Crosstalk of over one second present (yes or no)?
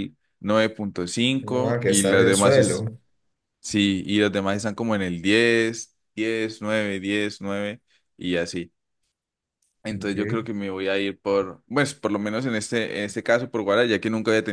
yes